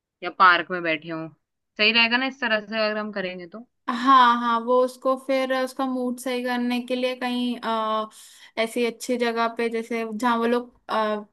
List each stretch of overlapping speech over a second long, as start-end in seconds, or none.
none